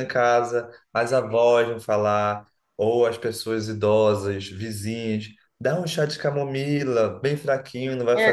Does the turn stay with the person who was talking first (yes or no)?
yes